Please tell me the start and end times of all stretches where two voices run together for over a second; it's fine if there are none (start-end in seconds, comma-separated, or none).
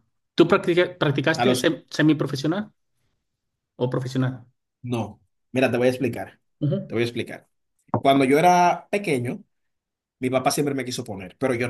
none